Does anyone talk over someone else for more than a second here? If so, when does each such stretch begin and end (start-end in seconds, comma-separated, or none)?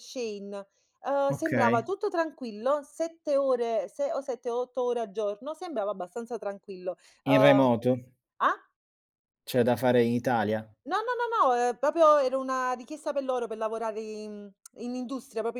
none